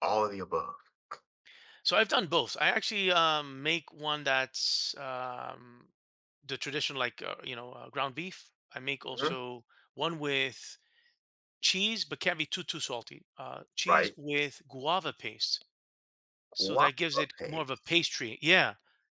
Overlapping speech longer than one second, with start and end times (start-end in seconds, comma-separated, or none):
16.6-18.0